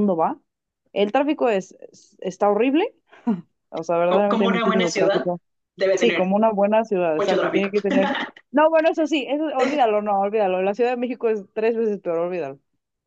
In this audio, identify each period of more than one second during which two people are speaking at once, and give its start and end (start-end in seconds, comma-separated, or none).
4.1-5.3